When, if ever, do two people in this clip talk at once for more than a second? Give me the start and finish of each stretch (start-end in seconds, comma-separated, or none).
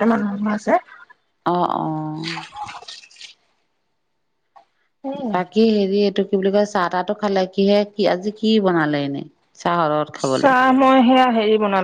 none